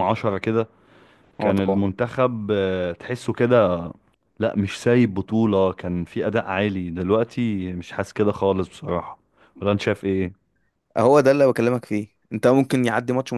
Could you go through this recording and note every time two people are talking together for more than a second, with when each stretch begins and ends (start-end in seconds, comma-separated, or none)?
none